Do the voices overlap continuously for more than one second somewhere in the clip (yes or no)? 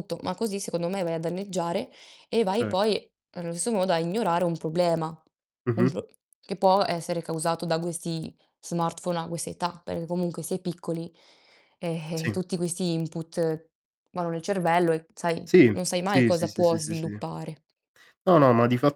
yes